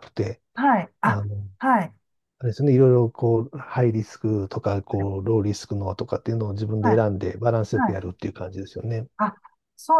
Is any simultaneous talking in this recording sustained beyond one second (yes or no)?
no